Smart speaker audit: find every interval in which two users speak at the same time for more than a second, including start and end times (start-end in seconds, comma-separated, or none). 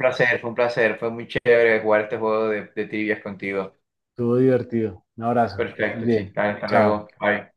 5.5-7.0